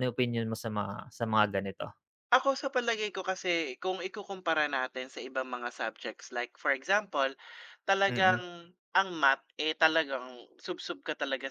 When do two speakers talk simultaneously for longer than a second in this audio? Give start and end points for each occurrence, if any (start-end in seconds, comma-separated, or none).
none